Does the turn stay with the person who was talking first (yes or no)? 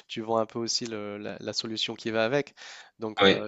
yes